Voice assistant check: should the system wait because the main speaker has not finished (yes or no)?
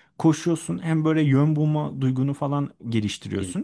yes